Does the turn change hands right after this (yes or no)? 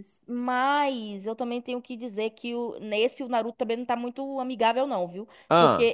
no